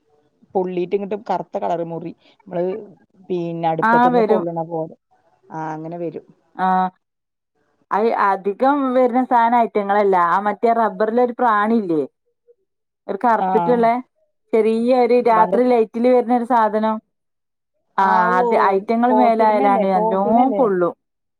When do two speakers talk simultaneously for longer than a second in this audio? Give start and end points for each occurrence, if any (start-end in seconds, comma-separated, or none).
19.1-20.6